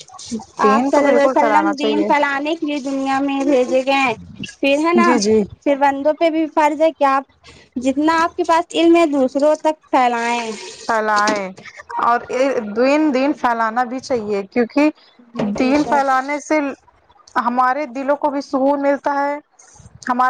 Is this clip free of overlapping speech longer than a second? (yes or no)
no